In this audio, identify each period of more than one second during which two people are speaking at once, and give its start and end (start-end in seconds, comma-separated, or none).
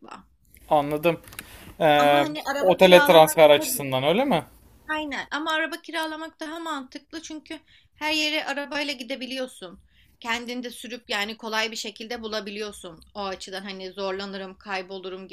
2.0-3.7